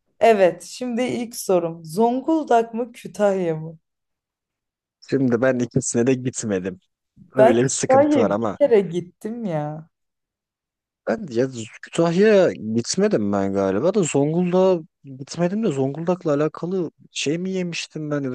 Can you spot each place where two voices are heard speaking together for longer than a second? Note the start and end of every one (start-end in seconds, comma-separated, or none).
7.4-8.6